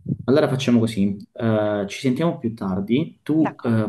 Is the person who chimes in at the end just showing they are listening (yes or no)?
yes